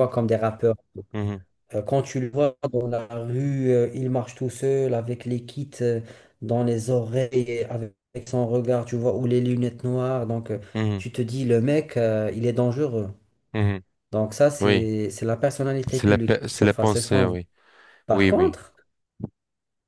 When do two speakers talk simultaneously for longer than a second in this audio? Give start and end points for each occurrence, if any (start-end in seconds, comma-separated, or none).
15.9-17.4